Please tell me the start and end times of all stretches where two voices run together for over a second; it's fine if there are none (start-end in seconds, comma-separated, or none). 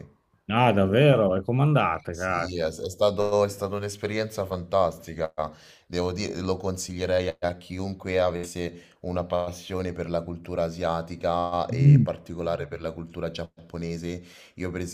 none